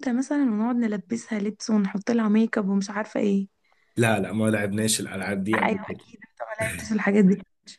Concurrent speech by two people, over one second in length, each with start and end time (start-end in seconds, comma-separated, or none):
none